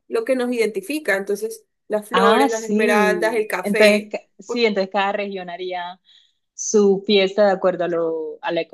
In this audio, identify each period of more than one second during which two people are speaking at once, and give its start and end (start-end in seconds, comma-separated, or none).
2.1-4.7